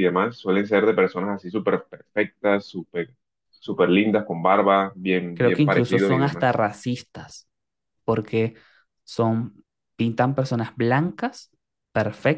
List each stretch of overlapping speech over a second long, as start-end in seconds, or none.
5.3-6.6